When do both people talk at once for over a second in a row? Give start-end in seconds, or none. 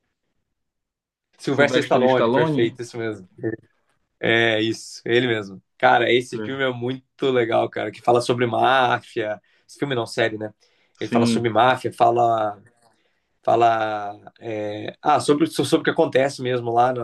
1.5-2.8